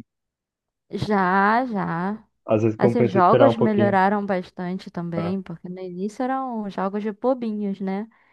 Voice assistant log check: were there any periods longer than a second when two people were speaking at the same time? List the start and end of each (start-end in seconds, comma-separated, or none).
2.8-4.0